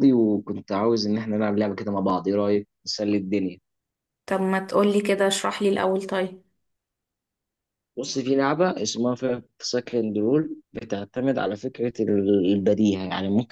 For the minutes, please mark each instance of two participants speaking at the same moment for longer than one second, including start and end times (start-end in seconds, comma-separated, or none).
none